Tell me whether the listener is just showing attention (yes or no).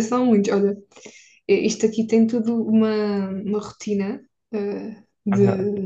yes